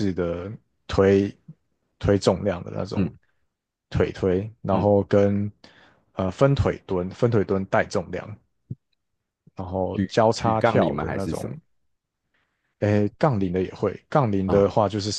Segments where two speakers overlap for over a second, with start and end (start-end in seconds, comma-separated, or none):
9.9-11.6